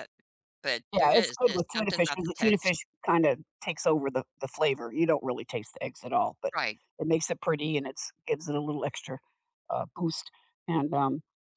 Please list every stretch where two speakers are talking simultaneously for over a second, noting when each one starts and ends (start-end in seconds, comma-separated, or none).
0.9-2.7